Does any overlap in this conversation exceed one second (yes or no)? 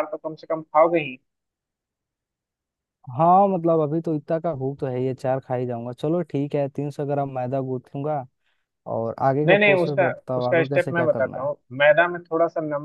yes